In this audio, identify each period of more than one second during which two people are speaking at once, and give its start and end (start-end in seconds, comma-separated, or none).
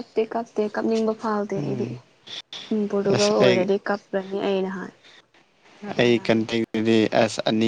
none